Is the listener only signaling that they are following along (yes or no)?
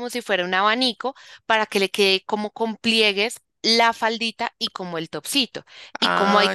yes